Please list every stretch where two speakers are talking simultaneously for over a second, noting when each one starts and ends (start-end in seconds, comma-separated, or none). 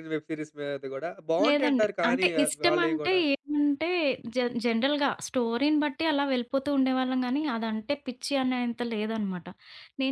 1.4-3.2